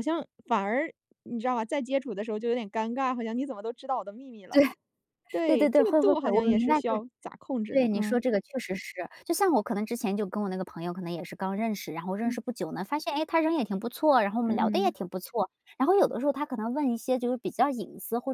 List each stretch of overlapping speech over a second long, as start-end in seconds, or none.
5.5-7.0